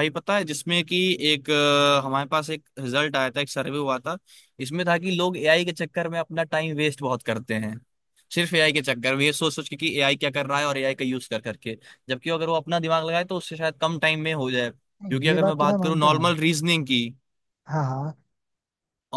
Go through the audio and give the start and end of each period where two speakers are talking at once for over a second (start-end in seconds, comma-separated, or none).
15.0-16.3